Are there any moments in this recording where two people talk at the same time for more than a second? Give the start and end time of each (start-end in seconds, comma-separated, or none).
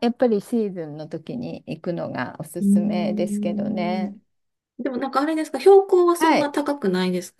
2.6-4.1